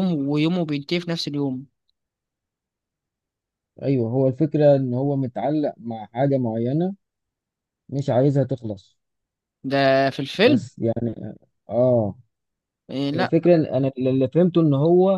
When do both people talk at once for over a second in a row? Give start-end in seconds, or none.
none